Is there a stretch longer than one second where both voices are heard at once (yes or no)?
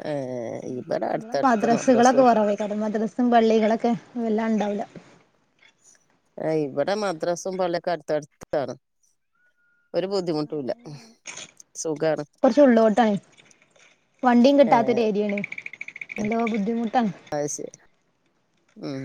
yes